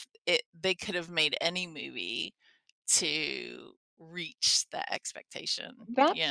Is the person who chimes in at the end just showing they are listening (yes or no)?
no